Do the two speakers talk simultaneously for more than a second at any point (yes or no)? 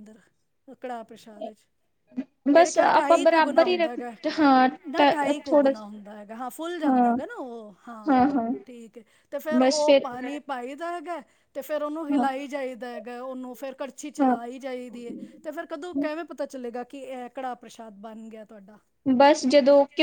yes